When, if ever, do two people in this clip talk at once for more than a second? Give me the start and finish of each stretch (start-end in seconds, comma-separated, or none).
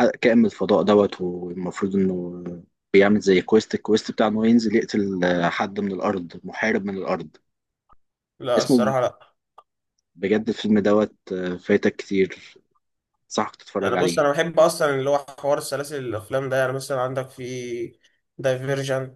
none